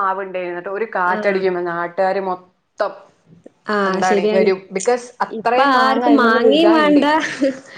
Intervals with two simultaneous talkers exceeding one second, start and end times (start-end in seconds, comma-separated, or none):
5.4-7.0